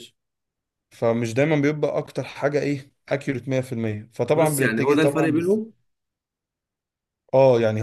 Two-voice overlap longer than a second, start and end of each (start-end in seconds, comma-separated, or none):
4.3-5.6